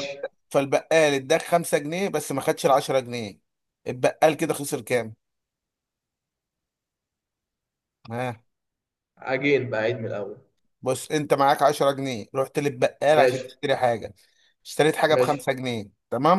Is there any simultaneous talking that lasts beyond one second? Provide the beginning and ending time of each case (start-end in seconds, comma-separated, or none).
none